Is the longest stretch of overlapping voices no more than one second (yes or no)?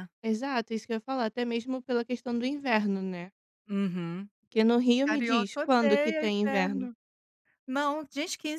no